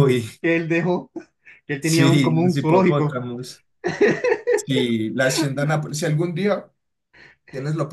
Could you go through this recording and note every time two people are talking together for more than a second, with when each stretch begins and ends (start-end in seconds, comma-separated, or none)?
1.8-3.2